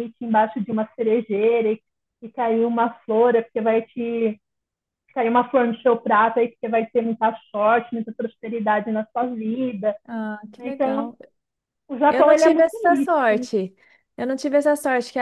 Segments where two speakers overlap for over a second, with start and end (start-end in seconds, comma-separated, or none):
12.1-13.5